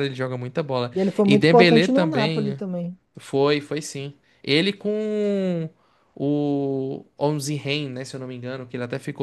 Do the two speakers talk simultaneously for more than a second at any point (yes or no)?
yes